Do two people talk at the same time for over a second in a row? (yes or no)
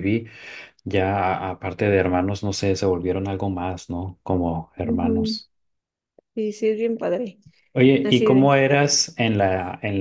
no